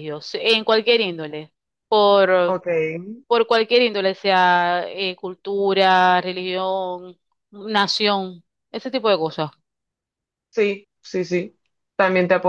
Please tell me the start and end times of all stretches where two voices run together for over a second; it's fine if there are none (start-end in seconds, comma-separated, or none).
none